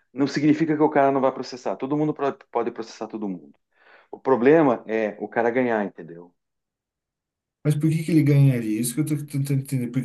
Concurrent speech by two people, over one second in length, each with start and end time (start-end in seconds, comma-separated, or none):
none